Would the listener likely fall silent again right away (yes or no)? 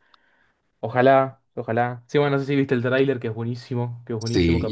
no